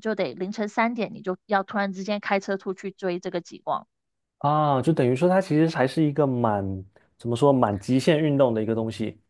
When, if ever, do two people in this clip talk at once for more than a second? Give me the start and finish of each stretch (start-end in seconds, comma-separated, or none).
none